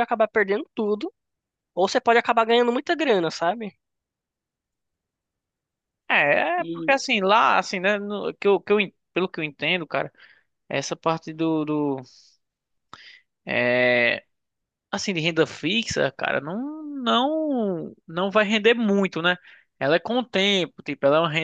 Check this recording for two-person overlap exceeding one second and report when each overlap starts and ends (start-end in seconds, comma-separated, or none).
none